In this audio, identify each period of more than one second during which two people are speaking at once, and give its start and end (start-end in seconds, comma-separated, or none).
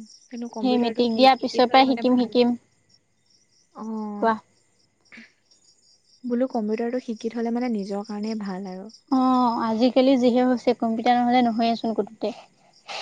0.6-2.4